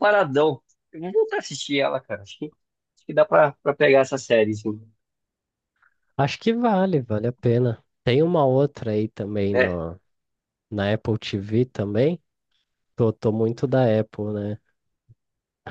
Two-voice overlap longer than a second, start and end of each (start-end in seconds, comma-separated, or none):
none